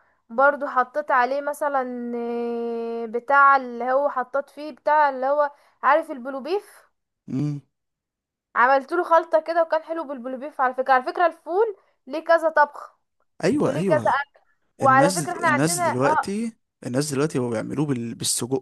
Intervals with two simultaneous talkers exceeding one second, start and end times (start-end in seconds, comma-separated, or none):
14.8-16.3